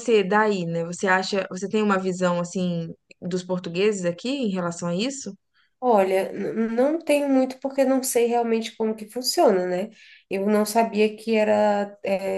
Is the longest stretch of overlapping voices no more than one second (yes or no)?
yes